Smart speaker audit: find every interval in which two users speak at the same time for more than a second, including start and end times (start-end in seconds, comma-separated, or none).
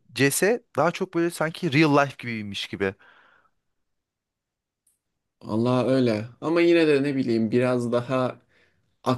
none